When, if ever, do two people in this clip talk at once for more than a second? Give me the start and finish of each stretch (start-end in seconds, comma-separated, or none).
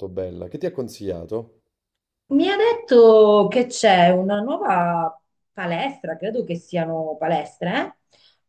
none